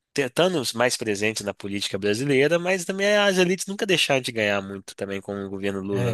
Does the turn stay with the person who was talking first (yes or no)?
no